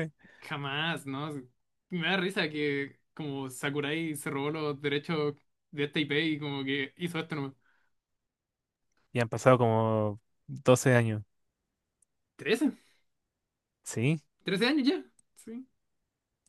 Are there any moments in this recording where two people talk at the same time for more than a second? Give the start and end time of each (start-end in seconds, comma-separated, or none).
none